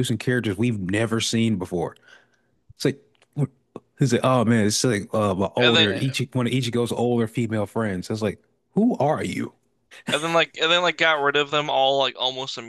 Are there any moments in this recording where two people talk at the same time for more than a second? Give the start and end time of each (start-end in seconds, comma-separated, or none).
none